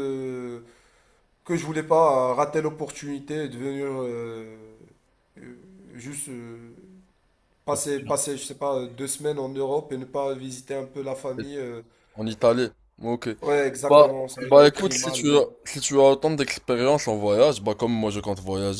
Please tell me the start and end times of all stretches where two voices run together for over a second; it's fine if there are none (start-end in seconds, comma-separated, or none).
13.9-15.3